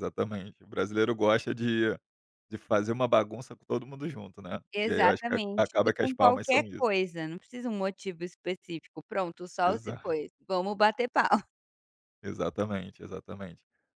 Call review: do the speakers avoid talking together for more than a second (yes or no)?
no